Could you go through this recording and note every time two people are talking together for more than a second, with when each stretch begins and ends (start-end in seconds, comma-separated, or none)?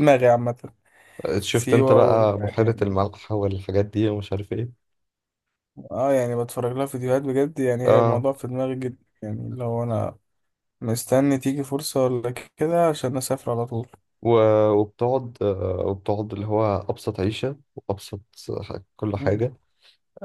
1.5-3.1